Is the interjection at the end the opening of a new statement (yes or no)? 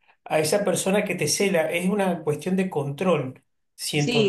yes